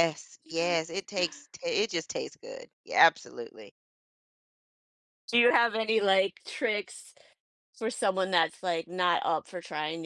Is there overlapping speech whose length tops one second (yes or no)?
no